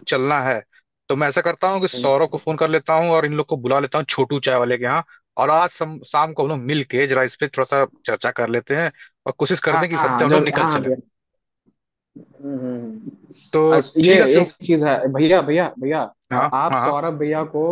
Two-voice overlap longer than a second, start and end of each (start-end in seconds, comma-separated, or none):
9.7-10.9